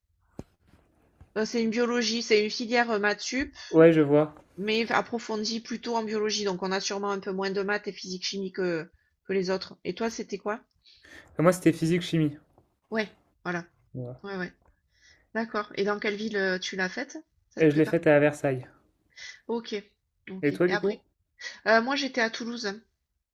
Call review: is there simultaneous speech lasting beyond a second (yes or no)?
no